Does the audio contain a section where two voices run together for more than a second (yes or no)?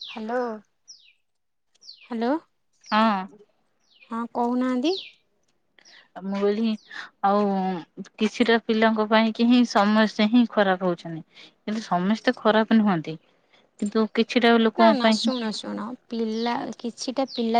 no